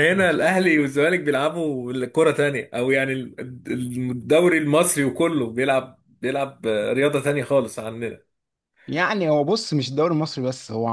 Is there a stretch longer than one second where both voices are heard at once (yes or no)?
no